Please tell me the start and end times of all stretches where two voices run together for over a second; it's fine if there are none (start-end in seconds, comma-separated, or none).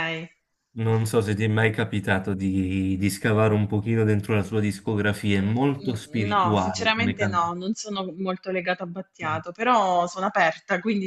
5.8-7.5